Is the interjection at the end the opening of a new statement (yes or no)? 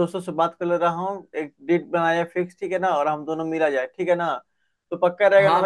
yes